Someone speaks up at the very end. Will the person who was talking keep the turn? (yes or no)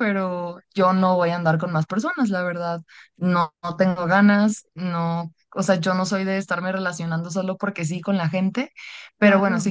yes